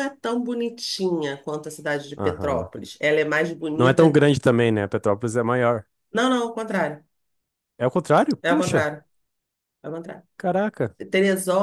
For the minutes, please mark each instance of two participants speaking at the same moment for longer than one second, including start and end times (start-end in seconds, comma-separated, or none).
none